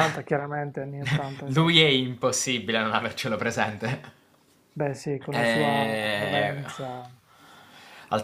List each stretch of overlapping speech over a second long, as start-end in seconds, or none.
5.3-6.6